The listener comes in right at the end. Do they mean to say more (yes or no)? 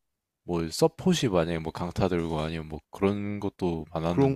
yes